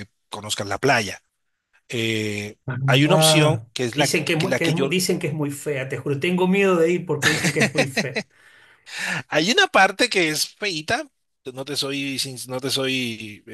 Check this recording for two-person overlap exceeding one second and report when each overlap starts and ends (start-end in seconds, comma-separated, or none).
3.1-5.0